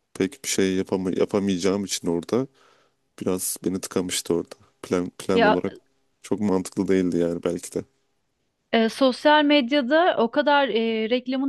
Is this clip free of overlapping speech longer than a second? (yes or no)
yes